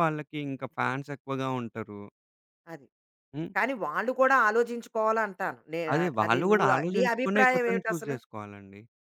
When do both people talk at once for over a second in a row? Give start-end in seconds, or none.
6.2-8.2